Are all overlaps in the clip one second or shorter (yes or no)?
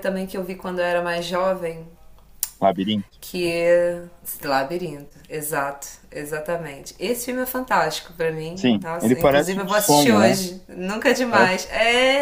no